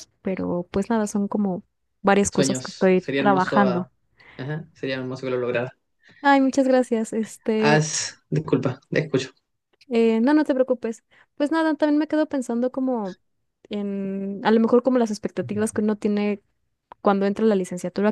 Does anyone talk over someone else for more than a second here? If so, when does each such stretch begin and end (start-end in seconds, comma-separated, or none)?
2.3-3.9